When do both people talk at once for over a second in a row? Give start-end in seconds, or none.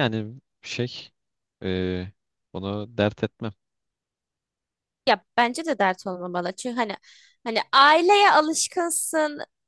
none